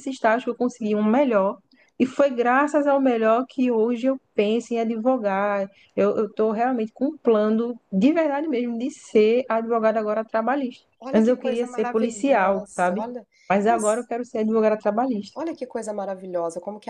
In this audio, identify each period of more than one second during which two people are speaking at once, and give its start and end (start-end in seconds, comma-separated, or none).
11.0-13.0